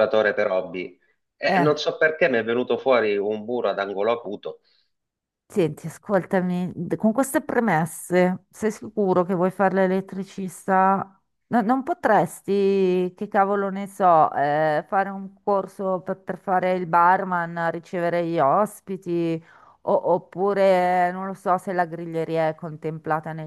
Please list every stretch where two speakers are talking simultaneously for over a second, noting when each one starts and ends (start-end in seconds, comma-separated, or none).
none